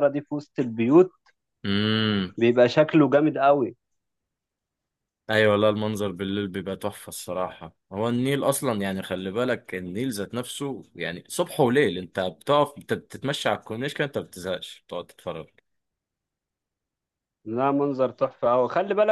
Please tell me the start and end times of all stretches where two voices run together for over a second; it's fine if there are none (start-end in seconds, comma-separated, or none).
none